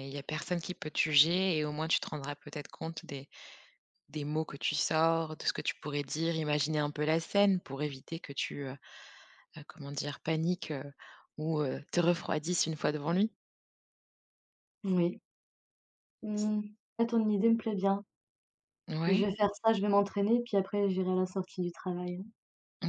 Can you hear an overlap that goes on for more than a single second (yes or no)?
no